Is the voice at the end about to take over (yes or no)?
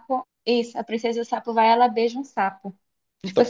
yes